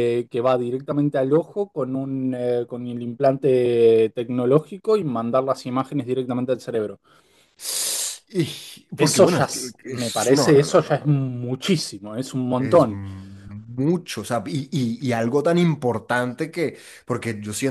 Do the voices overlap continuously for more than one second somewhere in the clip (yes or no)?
yes